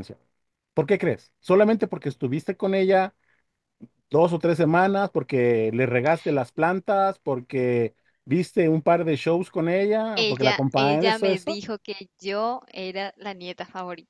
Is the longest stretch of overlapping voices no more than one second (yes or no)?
no